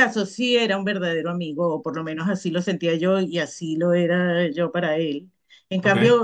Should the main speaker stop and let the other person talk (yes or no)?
no